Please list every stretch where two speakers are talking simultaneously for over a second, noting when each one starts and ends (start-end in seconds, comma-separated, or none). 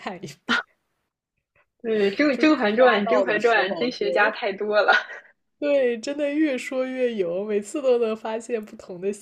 2.3-4.1